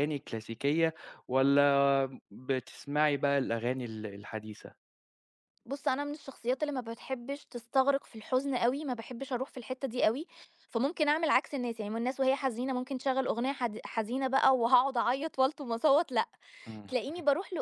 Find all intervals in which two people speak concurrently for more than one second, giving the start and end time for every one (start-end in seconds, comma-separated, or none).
none